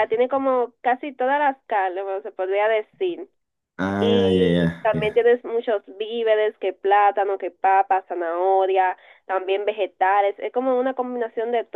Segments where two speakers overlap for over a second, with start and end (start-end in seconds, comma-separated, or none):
4.0-5.3